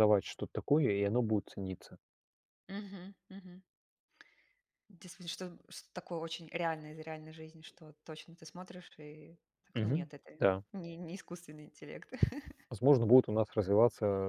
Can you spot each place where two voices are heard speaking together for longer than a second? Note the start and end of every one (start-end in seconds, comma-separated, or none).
none